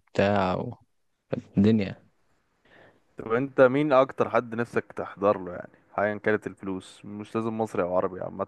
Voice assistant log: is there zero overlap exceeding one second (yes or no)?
yes